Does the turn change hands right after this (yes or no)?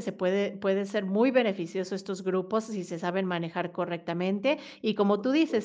no